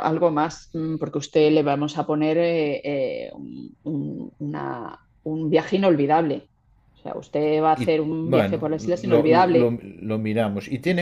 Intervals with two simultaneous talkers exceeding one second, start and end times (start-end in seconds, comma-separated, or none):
7.8-9.8